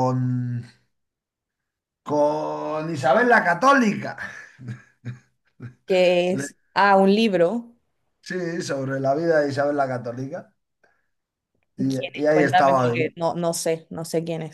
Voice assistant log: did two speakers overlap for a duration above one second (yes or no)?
yes